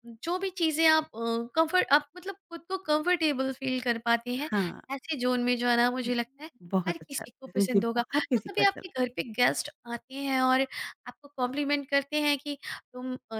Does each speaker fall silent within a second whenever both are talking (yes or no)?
no